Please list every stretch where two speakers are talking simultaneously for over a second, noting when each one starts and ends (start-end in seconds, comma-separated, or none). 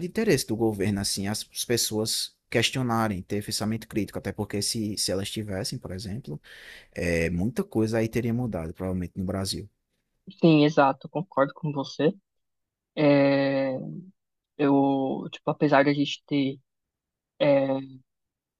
none